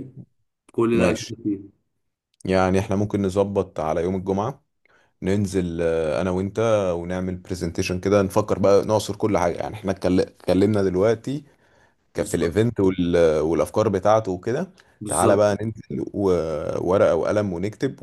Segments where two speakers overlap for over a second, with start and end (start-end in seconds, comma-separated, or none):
none